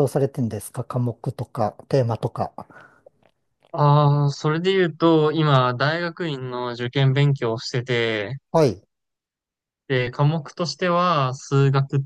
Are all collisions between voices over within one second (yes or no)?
yes